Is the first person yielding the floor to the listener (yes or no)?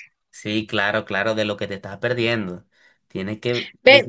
yes